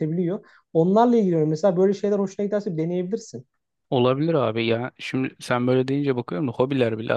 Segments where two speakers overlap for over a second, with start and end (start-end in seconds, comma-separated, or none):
none